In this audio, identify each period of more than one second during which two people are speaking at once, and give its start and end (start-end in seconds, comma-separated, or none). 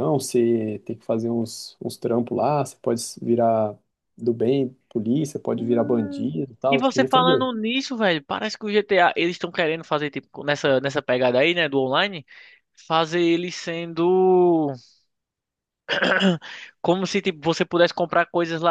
5.5-7.4